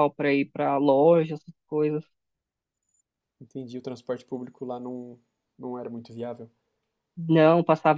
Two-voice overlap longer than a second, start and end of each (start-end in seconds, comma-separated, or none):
none